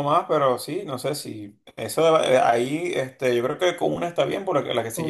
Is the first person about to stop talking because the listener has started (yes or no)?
no